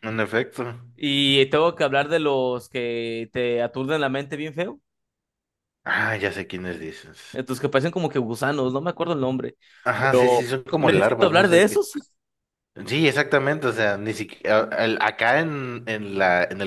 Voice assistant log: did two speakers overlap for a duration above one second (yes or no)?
yes